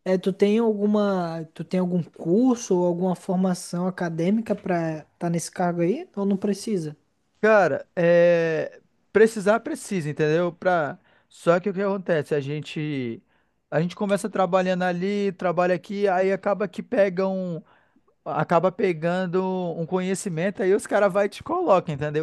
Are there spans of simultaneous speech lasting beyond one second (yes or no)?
no